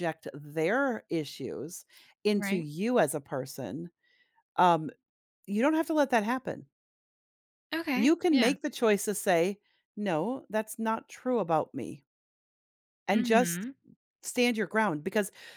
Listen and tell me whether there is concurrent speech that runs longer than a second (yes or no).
no